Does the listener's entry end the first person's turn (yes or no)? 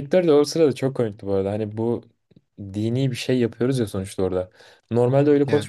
no